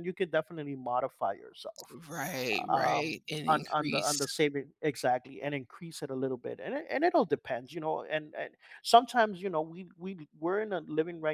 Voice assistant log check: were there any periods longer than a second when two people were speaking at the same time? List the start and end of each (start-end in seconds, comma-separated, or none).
2.7-4.3